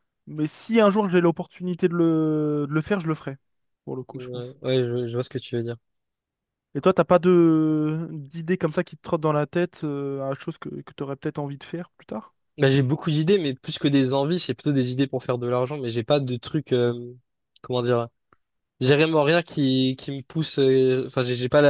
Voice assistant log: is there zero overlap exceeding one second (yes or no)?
yes